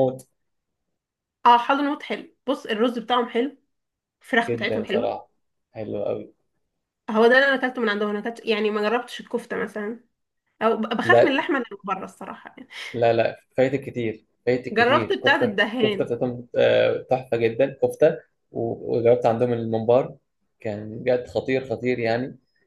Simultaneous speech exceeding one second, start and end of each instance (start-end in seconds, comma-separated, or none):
14.7-16.1